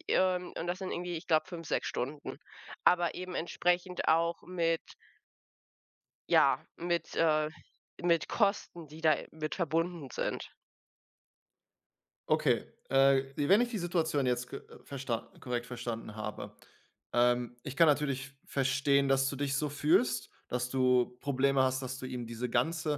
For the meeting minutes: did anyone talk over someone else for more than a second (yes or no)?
no